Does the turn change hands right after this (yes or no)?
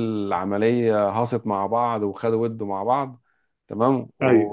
no